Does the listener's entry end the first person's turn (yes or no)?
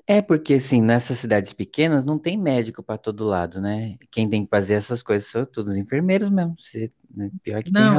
yes